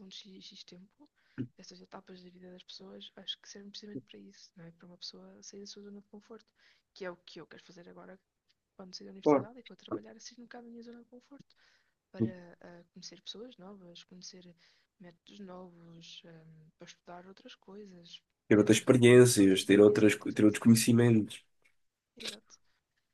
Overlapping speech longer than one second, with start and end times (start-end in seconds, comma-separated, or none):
18.5-20.6